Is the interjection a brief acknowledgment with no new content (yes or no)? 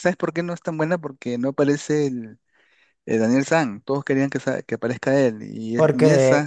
no